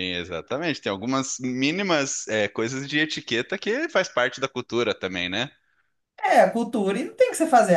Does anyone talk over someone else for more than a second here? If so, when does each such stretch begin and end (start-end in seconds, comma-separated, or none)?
none